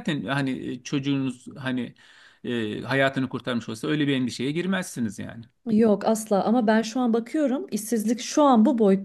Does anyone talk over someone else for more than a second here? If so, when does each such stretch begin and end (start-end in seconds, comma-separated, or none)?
none